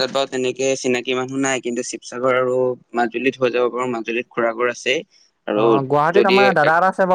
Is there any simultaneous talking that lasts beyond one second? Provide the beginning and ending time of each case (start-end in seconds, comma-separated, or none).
none